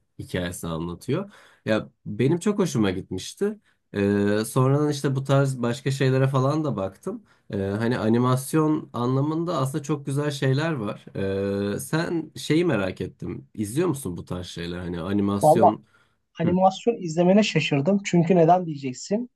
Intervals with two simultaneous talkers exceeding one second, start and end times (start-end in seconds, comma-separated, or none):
none